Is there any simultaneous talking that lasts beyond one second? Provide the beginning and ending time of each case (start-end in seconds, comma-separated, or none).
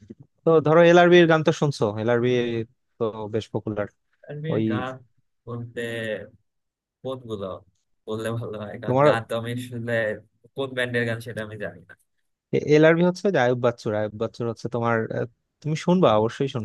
none